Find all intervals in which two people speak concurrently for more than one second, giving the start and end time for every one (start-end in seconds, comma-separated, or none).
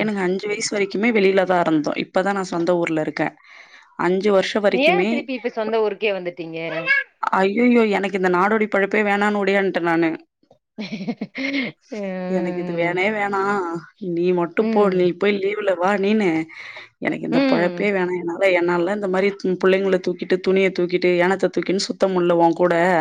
none